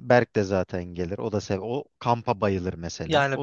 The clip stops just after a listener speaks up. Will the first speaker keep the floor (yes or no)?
no